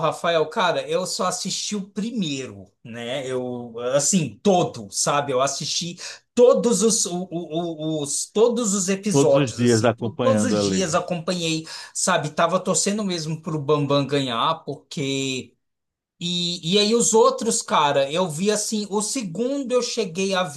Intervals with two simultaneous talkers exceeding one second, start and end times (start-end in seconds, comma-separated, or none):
9.1-10.9